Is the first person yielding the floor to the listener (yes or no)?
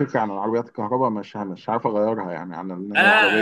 yes